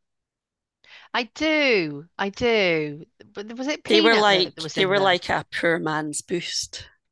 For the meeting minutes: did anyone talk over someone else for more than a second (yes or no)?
yes